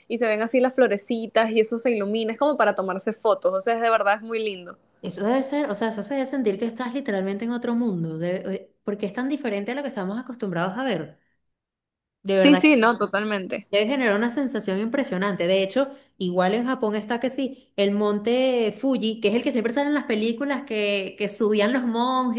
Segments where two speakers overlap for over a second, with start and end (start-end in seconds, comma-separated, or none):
none